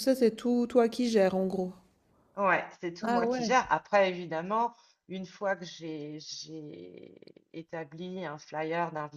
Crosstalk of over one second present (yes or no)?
no